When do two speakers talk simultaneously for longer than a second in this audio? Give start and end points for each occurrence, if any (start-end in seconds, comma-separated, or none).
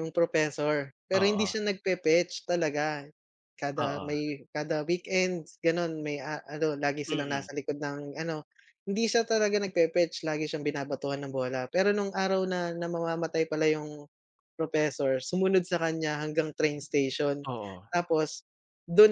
none